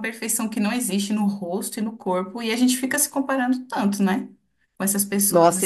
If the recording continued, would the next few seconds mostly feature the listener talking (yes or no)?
yes